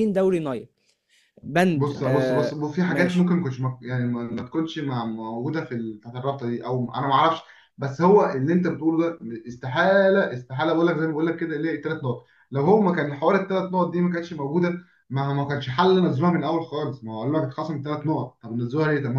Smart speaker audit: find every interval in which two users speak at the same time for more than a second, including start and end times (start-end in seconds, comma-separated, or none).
1.8-3.3